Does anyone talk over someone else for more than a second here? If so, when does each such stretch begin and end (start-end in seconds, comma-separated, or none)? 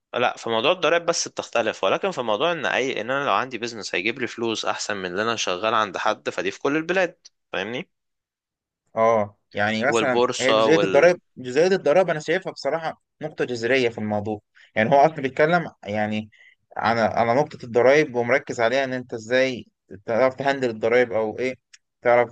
9.9-11.1